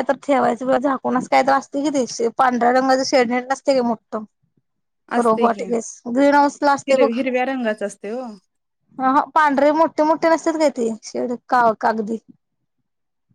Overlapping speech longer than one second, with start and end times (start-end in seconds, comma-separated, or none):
none